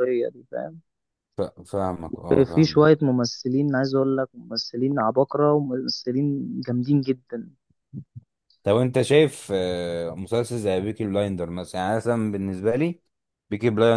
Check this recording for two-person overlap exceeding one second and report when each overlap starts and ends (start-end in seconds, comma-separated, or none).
none